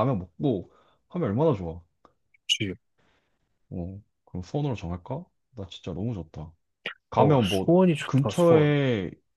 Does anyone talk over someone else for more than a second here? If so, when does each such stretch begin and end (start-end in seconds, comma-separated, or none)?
7.2-8.7